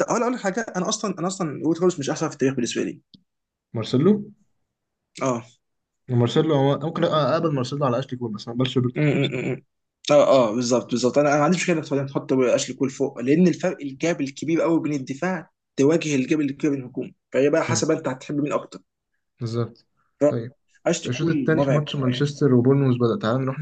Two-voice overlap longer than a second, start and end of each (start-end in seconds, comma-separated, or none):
21.1-22.4